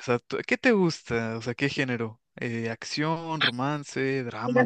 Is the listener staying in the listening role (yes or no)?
no